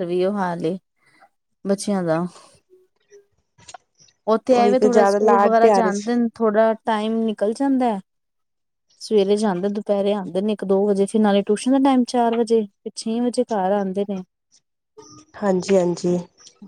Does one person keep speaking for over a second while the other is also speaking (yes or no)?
yes